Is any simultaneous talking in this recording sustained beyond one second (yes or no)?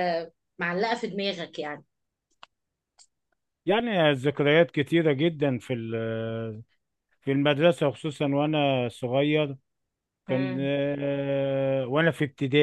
no